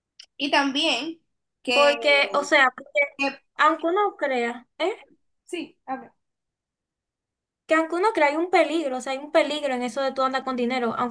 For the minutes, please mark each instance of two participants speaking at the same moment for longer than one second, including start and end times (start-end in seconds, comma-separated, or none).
none